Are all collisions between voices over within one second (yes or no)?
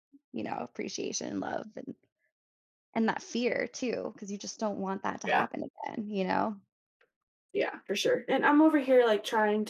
yes